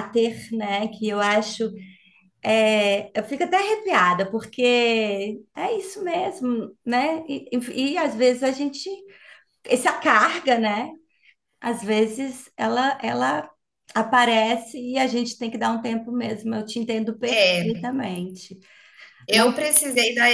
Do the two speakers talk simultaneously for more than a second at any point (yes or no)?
no